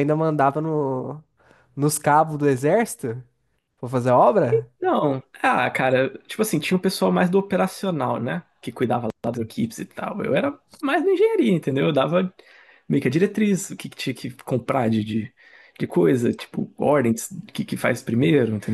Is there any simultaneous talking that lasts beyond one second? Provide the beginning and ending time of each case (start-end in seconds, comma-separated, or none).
none